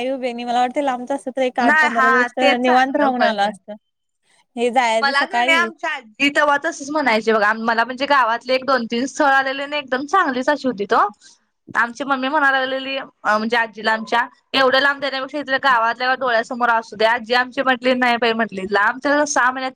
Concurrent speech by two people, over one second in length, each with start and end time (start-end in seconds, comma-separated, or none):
1.6-3.5